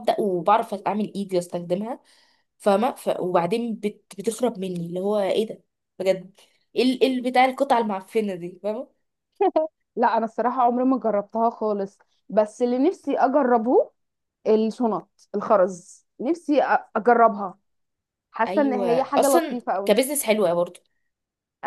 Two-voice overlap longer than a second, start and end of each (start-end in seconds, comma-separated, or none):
18.5-20.0